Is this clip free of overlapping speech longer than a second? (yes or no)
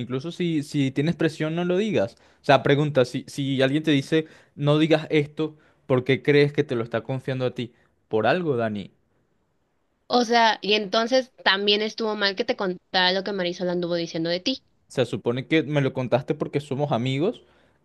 yes